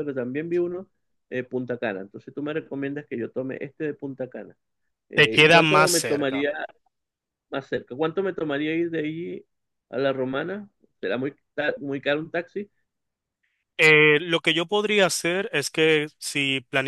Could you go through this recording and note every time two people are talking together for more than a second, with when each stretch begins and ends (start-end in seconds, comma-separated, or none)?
5.1-6.5